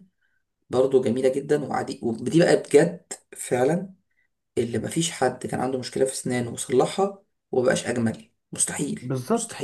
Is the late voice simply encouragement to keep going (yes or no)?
no